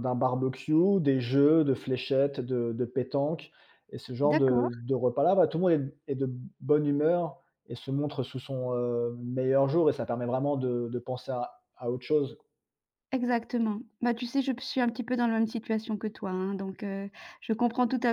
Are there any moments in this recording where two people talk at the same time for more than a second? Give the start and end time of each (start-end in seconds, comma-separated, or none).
none